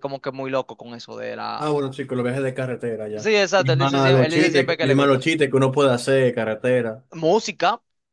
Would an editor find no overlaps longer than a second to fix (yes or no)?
no